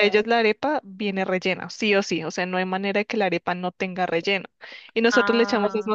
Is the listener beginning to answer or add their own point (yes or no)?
no